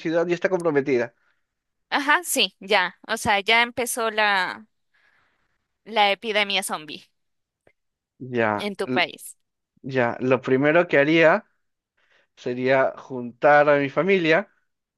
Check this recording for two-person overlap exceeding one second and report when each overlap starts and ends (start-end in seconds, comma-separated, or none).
none